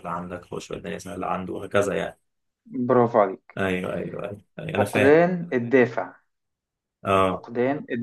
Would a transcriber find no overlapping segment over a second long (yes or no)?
yes